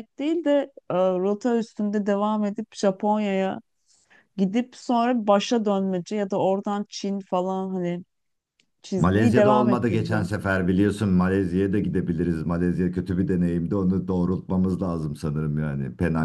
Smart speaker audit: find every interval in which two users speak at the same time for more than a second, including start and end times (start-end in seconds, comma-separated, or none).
9.0-10.3